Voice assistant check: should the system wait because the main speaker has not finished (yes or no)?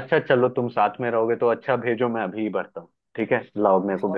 no